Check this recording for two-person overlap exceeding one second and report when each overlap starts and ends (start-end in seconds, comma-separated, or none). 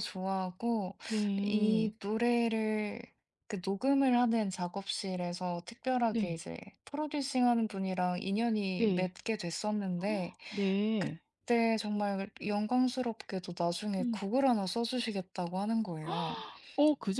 none